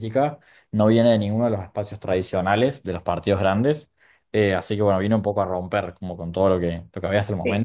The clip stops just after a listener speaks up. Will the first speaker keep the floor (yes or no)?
yes